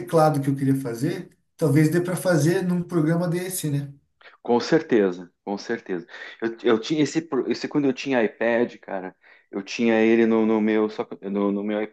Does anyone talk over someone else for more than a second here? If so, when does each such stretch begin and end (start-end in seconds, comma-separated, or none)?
none